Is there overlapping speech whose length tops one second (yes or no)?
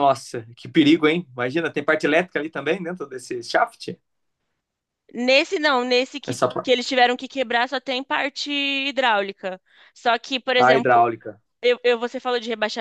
no